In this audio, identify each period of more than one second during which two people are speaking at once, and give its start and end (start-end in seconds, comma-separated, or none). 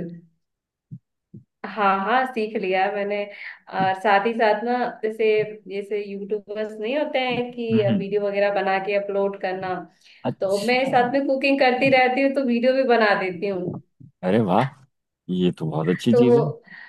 none